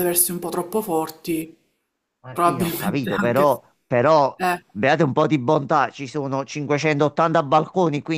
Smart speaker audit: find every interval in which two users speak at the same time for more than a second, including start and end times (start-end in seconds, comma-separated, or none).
2.3-3.6